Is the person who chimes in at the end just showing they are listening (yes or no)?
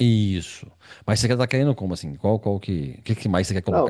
no